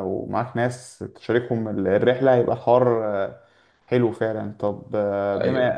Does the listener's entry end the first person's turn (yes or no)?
no